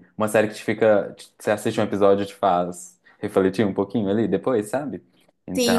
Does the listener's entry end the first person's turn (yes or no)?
yes